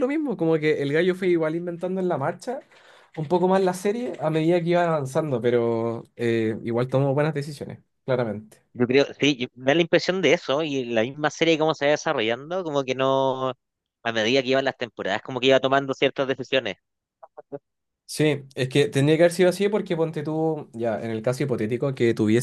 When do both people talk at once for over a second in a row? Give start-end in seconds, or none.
none